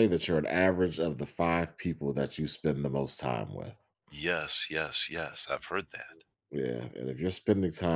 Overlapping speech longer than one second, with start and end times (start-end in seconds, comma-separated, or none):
none